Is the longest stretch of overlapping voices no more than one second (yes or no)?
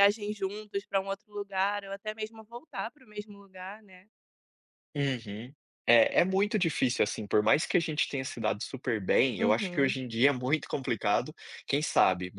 yes